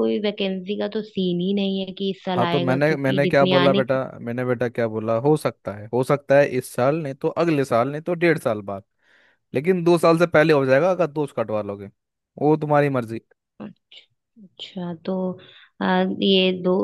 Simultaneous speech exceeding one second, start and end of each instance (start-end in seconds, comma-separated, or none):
2.4-4.0